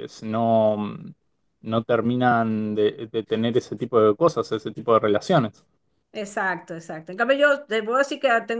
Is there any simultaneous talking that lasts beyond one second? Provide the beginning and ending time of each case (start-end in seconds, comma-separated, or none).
none